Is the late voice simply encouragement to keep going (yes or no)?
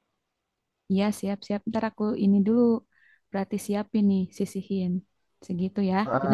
no